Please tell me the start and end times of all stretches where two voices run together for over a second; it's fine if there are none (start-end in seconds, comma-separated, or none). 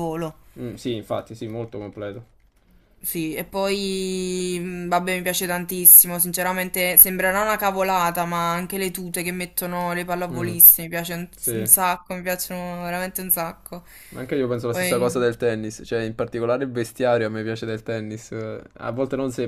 none